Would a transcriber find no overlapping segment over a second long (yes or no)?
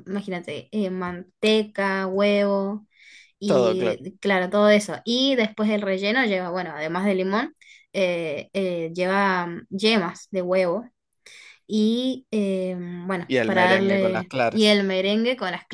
no